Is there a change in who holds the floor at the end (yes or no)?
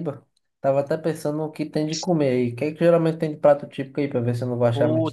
yes